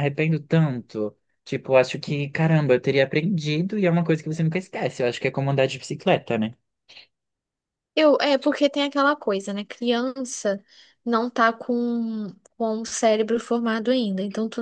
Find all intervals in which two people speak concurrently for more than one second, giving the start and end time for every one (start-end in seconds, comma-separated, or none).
none